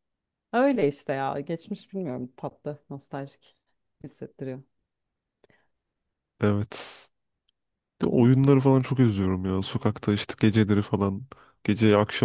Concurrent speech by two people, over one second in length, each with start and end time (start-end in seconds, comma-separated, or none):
none